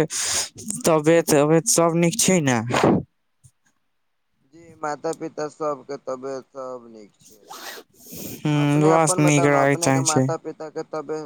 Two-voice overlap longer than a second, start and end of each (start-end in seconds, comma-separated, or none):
8.4-10.2